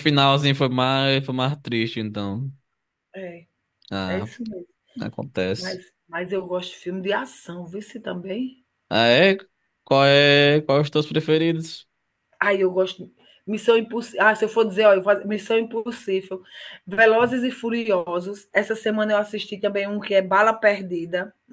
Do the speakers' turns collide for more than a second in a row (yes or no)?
no